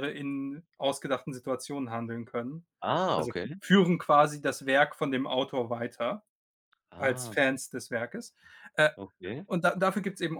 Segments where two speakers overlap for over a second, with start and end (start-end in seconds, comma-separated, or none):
none